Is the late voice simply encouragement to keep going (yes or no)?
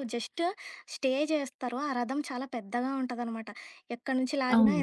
yes